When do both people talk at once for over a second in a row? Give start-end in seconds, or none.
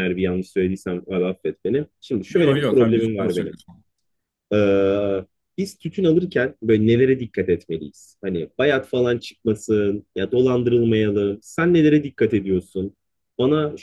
2.3-3.5